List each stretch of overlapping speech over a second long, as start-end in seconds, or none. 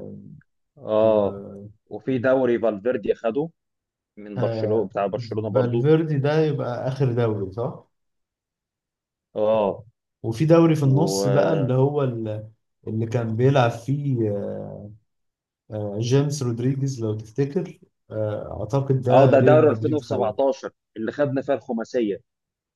19.1-20.4